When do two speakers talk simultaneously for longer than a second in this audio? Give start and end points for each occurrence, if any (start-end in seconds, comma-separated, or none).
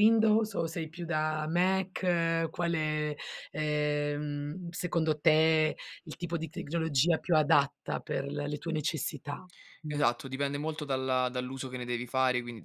none